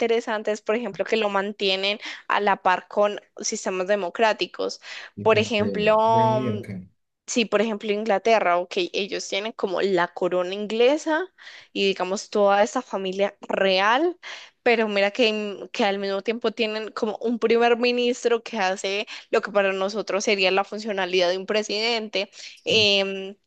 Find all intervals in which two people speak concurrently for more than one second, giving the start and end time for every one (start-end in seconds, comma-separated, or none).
5.2-6.6